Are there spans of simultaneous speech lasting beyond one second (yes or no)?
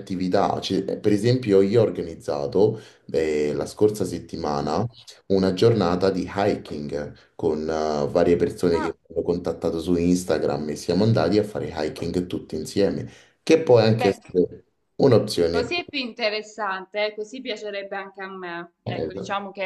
no